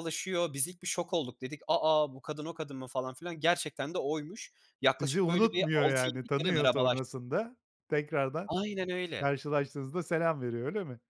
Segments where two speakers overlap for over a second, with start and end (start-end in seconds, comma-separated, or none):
5.0-7.0